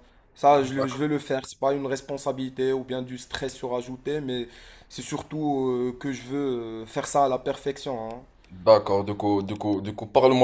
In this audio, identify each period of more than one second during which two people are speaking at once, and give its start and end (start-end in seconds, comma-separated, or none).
none